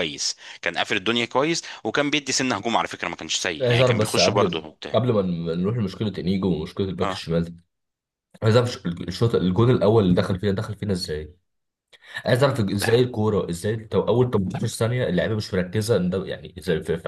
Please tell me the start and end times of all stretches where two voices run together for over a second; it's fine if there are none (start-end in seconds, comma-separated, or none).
3.6-5.0